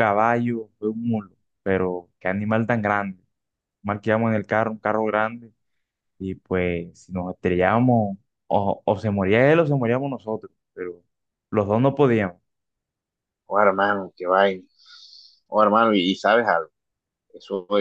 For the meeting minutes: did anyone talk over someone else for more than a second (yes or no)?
no